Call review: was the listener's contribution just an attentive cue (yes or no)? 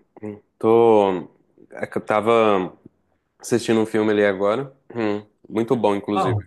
yes